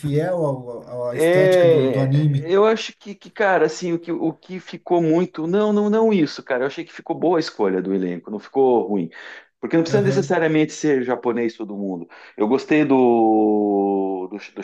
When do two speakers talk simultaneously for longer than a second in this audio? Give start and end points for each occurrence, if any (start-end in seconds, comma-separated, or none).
1.1-2.5